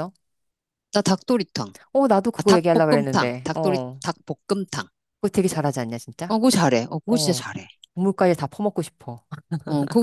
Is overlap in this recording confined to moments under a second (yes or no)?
no